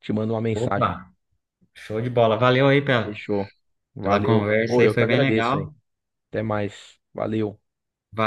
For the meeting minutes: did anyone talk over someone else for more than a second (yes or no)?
yes